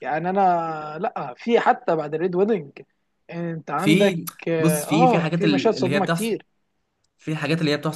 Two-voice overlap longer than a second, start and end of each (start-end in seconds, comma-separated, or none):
3.8-6.4